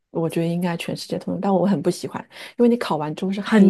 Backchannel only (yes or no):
yes